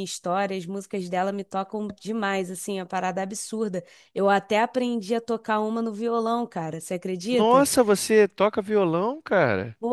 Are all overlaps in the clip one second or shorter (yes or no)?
yes